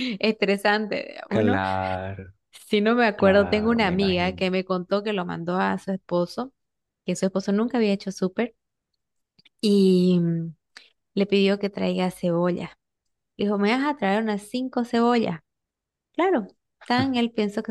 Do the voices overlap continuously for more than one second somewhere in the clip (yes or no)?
yes